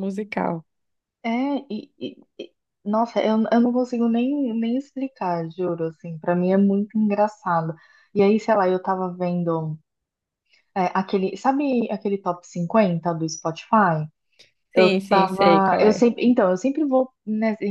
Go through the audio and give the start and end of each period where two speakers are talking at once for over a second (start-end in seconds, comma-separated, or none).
14.7-16.1